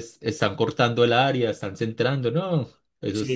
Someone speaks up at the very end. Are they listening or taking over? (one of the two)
taking over